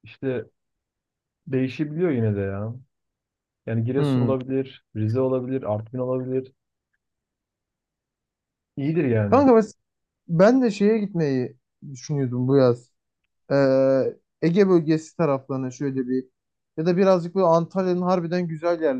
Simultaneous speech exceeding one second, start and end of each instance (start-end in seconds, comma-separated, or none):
none